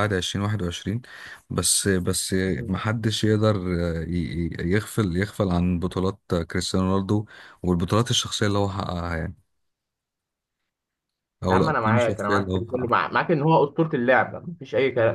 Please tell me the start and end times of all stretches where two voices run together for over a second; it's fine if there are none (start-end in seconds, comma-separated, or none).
11.5-13.0